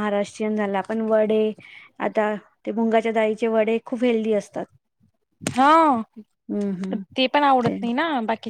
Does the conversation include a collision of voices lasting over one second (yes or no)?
no